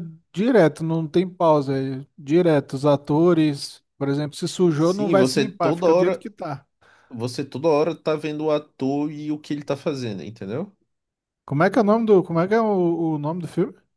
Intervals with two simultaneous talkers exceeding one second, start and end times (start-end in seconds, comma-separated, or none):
4.8-6.2